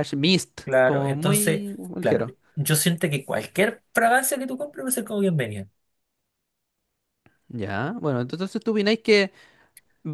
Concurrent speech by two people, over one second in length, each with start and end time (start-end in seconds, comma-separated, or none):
0.6-2.3